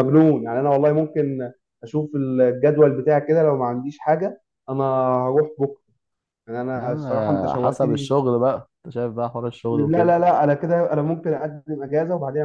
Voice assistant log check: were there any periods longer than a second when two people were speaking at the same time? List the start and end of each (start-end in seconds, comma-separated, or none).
6.8-8.1